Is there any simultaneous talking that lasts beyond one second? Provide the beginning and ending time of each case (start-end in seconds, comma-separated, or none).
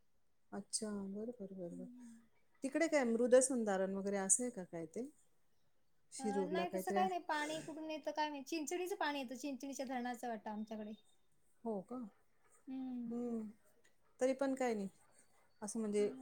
6.2-7.6